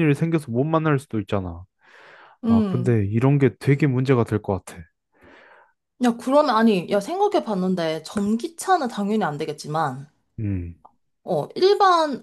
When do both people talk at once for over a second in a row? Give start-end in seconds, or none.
none